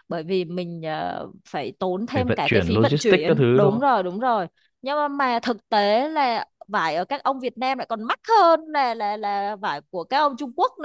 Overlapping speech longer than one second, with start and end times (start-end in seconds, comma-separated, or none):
2.1-3.9